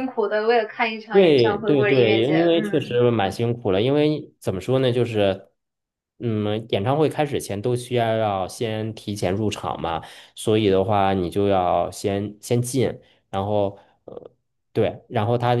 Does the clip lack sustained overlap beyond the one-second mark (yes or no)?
no